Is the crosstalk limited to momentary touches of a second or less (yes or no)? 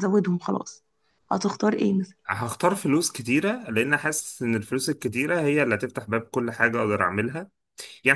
yes